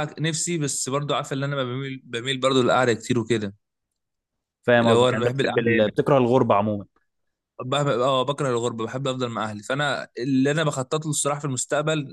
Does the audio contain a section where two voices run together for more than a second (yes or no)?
yes